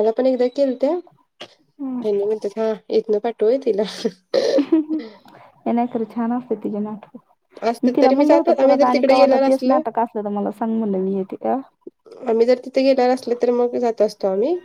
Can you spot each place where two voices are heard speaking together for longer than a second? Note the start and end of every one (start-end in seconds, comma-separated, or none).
7.8-9.4